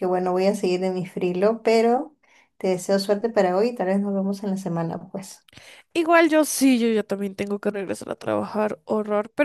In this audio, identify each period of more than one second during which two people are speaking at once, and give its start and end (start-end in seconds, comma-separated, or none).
none